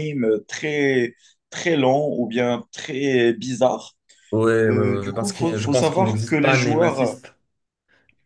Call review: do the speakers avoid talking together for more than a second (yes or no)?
no